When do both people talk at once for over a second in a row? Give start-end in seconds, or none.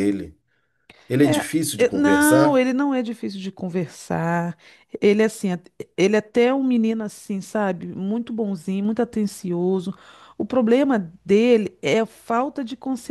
1.2-2.6